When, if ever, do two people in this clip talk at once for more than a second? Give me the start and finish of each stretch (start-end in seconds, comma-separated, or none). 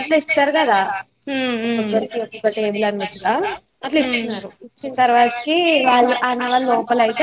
none